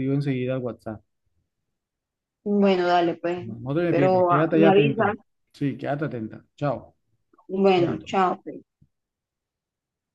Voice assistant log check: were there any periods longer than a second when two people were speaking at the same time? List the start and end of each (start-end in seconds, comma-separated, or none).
3.9-5.2